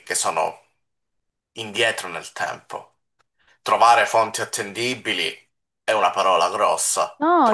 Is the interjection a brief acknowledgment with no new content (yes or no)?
no